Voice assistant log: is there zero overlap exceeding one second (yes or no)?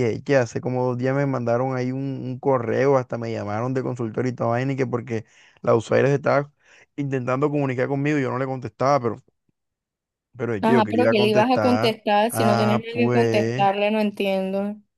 no